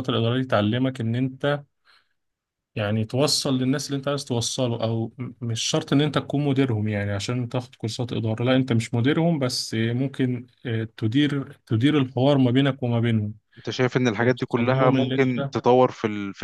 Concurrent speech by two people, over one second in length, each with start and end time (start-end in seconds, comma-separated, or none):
14.2-15.5